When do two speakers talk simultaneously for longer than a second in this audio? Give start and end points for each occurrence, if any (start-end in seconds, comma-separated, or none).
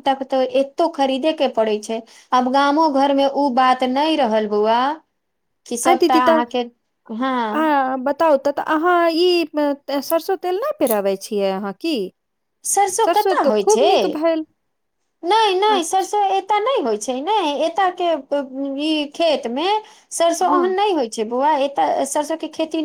none